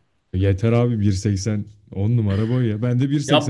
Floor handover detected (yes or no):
yes